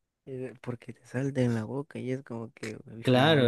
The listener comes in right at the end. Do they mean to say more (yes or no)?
yes